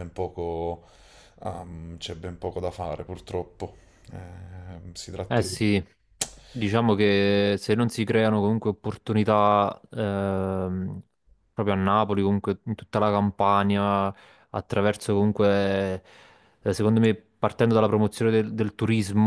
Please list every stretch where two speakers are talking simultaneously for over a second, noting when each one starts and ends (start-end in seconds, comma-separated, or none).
none